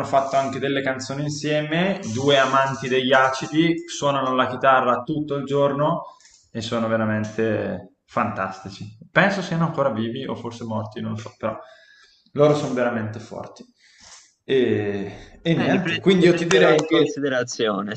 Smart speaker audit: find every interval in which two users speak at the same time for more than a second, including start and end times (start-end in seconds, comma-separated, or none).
15.6-17.1